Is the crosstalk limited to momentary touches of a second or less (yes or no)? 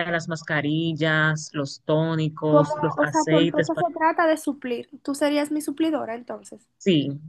no